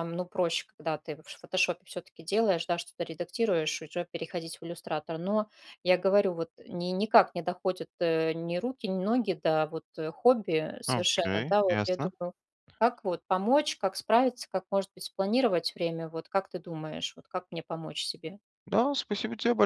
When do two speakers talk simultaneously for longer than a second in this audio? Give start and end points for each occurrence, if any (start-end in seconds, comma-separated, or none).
10.9-12.1